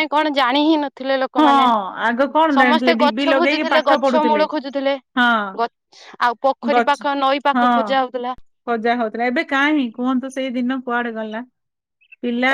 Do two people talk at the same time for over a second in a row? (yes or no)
yes